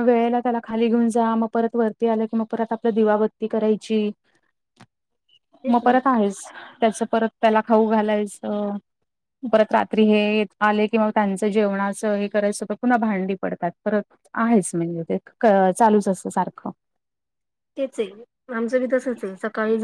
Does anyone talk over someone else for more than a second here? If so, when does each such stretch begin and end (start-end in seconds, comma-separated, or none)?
none